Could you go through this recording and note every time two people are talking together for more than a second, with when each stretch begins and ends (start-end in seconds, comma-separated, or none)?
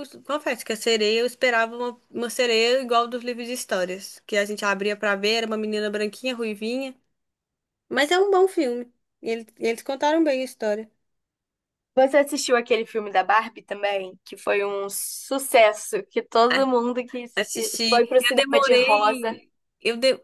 17.9-19.4